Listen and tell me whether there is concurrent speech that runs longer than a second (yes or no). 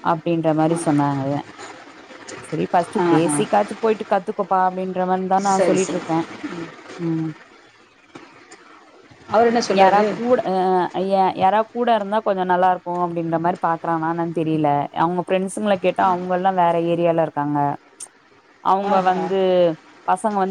no